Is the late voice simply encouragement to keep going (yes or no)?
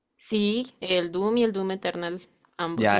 no